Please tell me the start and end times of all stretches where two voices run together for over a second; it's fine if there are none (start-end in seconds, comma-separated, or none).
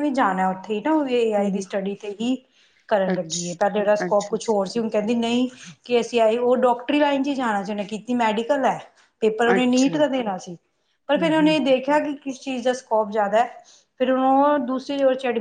none